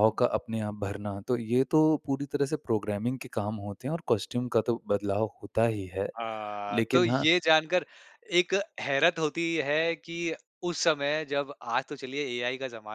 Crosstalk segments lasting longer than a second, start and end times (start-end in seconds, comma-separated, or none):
none